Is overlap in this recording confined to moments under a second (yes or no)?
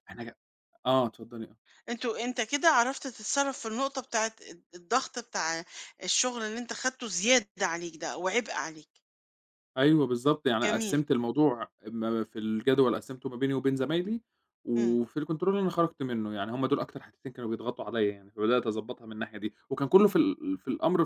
yes